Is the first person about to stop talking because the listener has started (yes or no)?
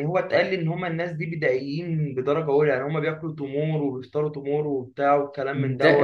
yes